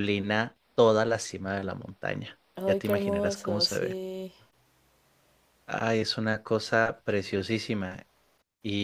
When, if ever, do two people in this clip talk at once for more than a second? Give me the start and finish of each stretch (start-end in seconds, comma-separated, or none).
2.5-4.0